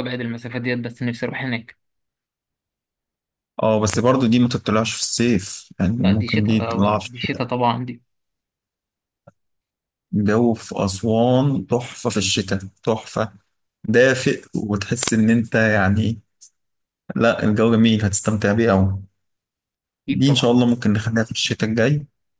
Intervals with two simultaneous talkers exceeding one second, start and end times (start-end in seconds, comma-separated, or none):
6.0-7.5